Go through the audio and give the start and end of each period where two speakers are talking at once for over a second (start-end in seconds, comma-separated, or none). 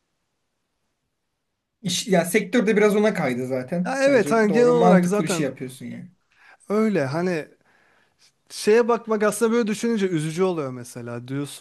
3.8-5.5